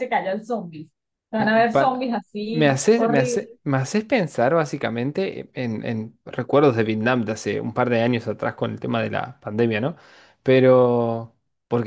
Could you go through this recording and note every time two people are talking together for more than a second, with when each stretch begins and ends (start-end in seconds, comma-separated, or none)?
1.4-3.6